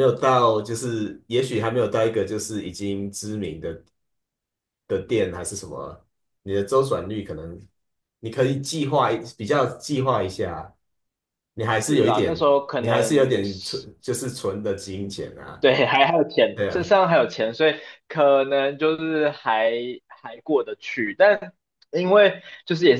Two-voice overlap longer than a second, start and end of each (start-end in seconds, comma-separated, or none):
11.9-13.9